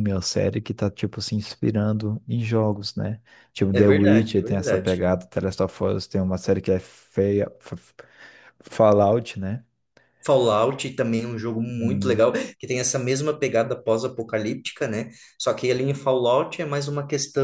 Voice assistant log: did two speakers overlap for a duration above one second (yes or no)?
yes